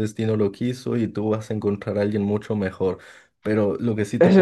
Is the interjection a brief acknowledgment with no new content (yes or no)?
no